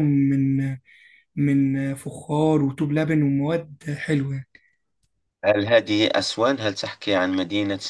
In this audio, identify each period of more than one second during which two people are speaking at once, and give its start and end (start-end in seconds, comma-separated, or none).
none